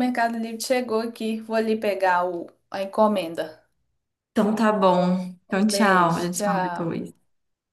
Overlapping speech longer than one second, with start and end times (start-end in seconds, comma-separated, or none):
5.5-7.0